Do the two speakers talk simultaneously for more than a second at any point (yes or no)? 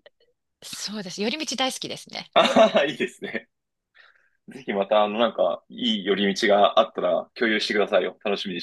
no